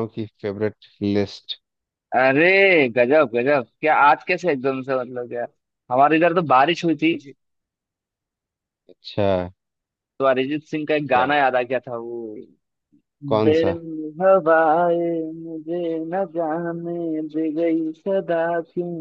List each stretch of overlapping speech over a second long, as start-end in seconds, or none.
none